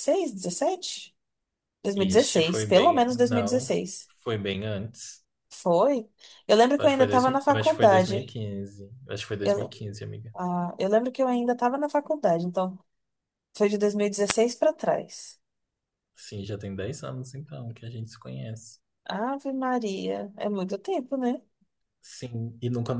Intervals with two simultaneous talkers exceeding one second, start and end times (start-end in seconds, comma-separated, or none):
1.9-3.6, 6.8-8.4